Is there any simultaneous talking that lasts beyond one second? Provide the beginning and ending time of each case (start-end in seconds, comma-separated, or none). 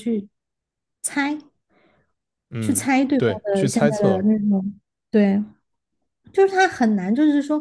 2.6-4.3